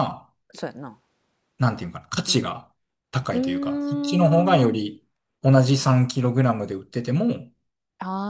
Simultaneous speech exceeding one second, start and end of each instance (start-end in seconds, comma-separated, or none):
3.3-4.9